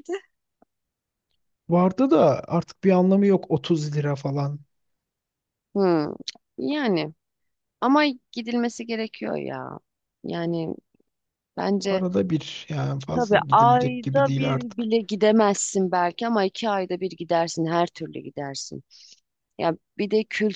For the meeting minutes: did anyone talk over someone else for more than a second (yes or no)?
yes